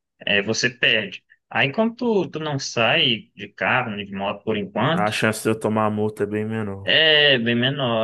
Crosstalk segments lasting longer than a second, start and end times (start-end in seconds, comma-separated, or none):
none